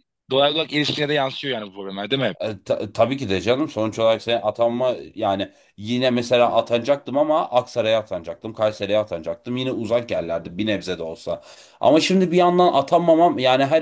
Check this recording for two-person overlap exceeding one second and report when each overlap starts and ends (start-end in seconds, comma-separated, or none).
none